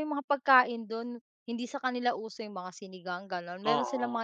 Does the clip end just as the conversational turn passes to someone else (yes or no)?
yes